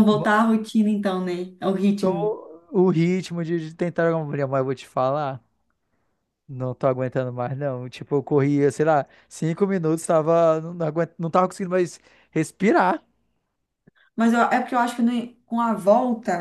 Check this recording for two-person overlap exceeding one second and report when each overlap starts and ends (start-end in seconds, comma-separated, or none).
none